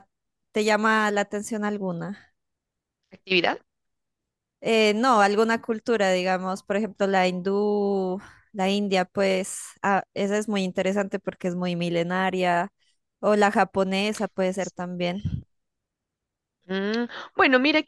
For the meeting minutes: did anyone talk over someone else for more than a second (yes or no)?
no